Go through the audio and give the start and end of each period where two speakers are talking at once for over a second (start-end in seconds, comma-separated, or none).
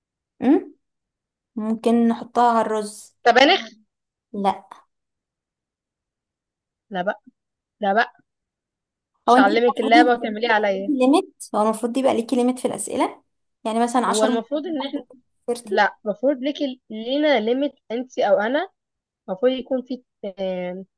9.3-10.9